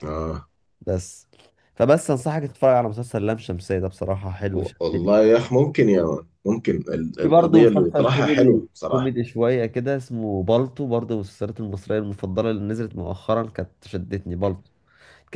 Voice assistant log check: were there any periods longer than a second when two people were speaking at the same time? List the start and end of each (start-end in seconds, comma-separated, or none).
7.2-9.1